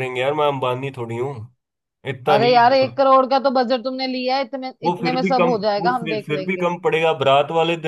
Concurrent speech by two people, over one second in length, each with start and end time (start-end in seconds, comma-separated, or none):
4.8-6.7